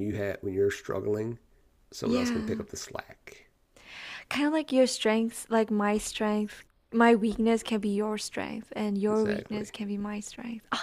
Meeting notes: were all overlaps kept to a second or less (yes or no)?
yes